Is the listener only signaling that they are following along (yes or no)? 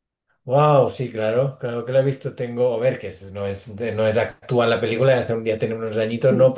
yes